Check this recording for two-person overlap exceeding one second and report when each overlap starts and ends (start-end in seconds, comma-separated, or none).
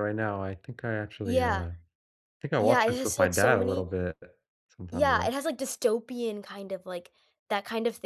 2.6-3.9